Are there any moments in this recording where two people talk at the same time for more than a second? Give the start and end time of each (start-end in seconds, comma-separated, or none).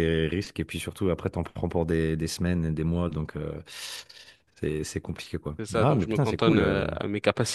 5.6-6.9